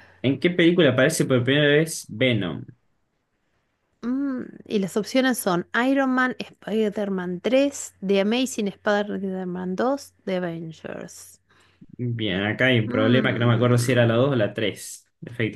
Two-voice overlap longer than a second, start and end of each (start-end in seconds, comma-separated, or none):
12.8-14.2